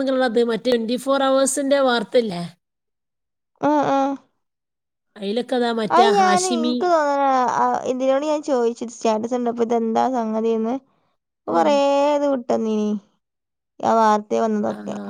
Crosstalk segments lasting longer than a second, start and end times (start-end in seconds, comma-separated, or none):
none